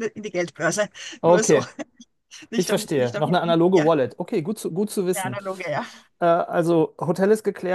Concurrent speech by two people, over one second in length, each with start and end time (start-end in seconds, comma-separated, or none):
2.6-3.9